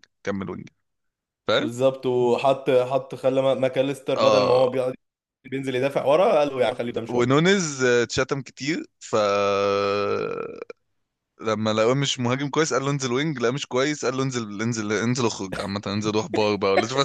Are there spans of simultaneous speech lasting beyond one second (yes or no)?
no